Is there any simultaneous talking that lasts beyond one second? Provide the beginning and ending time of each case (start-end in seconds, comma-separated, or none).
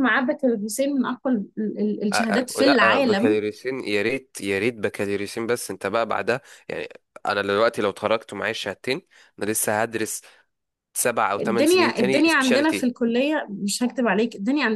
2.1-3.4, 11.4-12.9